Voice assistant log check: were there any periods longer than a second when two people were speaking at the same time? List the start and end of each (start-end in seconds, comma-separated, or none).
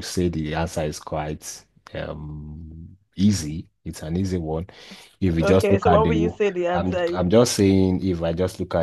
5.4-7.2